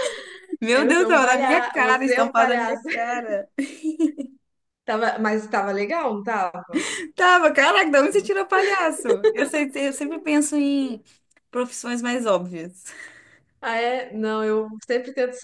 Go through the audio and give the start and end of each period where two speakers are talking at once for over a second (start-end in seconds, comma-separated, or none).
0.7-2.8